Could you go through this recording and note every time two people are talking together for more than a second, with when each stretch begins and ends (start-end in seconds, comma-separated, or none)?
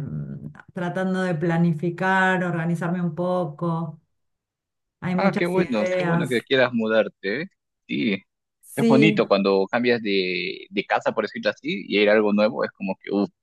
5.1-6.5